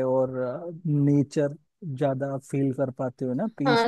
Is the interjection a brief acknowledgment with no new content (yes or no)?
no